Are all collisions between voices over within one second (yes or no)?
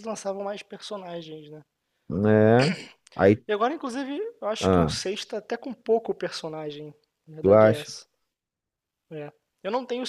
yes